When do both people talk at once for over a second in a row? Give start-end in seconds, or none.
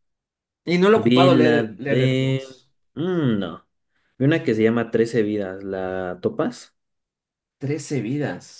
0.9-2.4